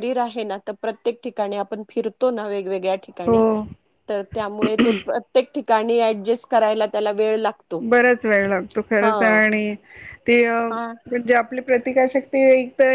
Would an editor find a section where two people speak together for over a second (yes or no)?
no